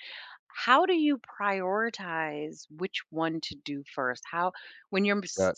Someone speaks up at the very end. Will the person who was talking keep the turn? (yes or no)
yes